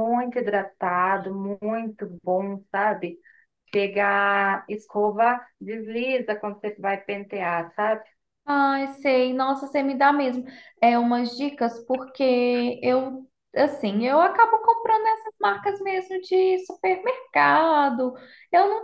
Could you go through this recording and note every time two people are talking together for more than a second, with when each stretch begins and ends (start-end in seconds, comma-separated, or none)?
none